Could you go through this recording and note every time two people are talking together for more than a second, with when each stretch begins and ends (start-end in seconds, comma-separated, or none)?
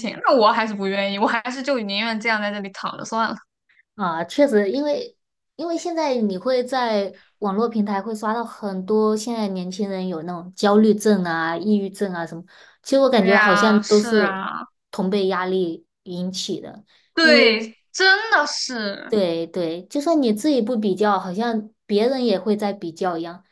13.1-14.4